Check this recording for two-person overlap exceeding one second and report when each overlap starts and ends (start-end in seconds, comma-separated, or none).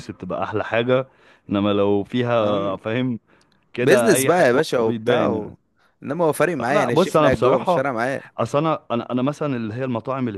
3.8-5.5, 6.6-7.9